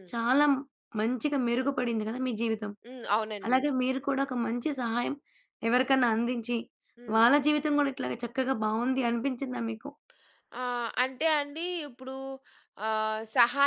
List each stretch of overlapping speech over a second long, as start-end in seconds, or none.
none